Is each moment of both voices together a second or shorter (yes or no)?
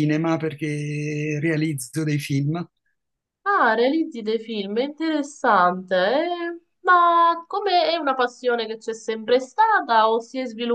yes